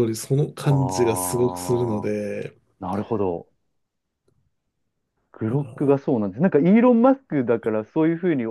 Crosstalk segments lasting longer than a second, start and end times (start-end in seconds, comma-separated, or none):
0.7-2.1